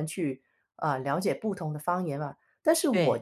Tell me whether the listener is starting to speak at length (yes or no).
no